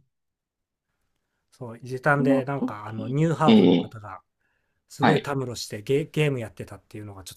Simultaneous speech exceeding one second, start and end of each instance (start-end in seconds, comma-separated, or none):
2.2-3.9